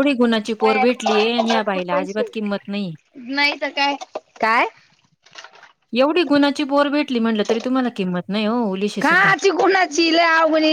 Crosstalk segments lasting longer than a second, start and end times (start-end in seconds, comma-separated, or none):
0.6-2.3